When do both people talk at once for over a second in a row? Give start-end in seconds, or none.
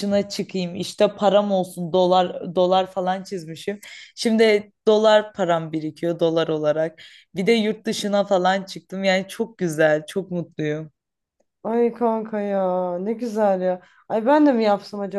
none